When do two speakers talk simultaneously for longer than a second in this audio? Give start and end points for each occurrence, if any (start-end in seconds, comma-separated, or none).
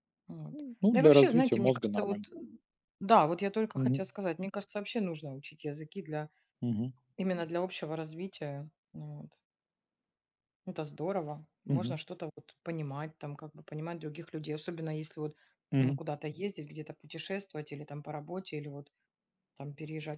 0.8-2.3